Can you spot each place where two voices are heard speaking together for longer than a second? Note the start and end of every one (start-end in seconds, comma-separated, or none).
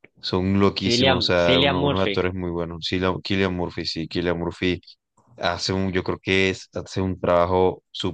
0.7-2.3